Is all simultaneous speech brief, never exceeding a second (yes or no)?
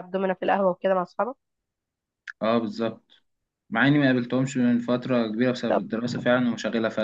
yes